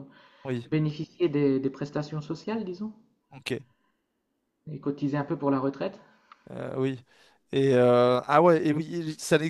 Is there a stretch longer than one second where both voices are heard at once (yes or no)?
no